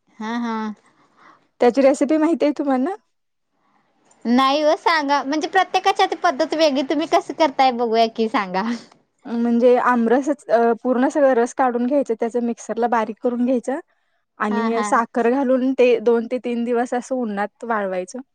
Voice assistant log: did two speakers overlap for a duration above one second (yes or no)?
no